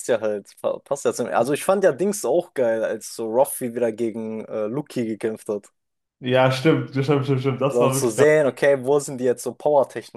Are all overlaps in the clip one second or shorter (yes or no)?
yes